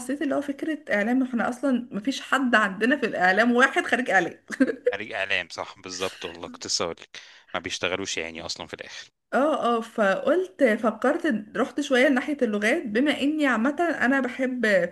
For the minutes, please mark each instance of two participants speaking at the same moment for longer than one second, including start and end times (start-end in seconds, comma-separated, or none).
none